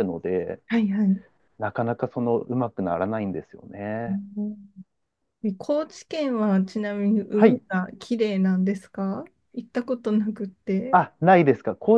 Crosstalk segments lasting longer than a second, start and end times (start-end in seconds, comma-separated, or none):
none